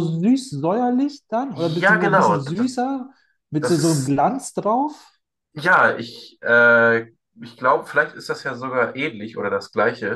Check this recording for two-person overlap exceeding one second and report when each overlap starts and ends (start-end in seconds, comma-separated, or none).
1.5-2.7